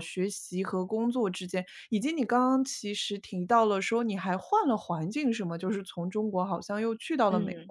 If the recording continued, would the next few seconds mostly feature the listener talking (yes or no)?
yes